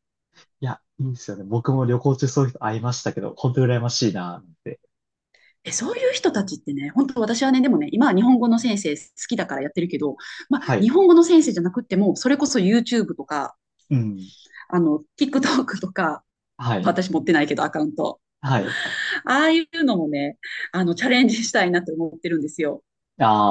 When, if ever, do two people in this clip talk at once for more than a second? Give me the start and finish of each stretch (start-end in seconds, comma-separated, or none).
none